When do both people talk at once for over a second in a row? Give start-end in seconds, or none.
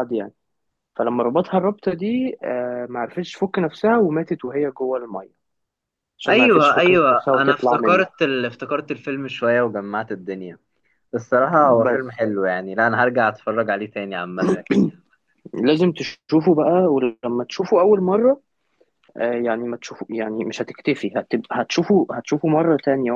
6.3-8.1